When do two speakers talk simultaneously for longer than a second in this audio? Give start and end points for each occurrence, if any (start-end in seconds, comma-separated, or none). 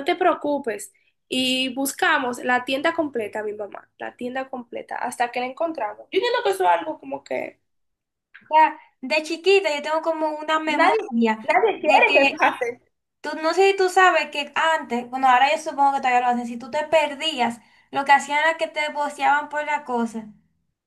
10.7-12.5